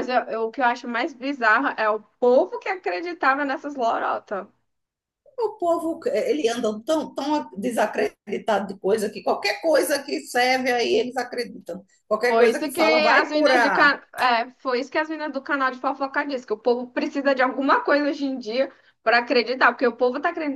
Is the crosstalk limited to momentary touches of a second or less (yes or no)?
no